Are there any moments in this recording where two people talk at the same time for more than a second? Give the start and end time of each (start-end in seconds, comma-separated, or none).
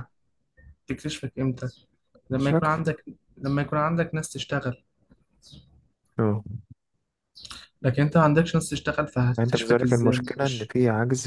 9.4-10.7